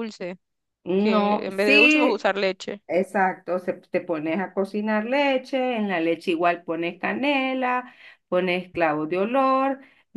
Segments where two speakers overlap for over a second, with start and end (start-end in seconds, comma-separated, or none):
0.9-2.3